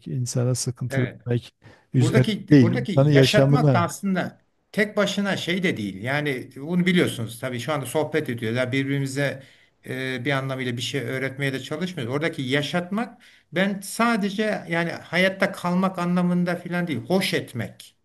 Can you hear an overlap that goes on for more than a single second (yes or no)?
yes